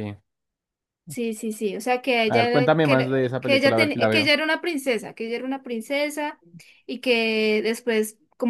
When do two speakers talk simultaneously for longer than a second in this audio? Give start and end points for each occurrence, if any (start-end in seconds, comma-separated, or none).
2.2-4.3